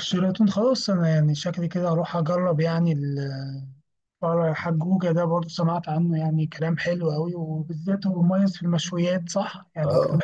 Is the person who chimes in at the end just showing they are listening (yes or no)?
no